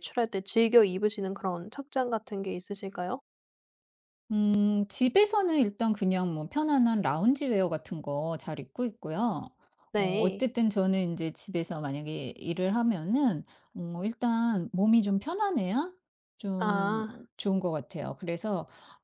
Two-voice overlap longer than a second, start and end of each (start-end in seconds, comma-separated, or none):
none